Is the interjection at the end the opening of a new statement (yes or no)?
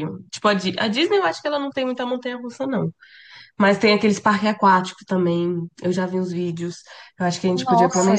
yes